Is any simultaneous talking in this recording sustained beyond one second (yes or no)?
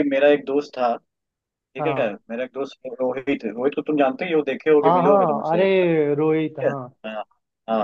yes